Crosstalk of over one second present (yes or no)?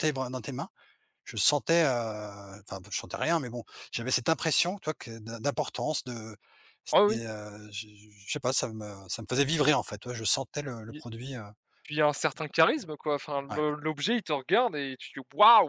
no